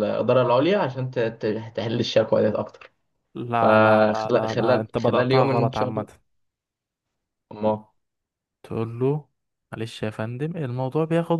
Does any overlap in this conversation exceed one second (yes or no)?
yes